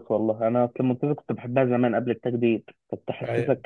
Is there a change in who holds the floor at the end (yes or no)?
no